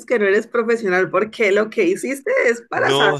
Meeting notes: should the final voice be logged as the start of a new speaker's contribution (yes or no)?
yes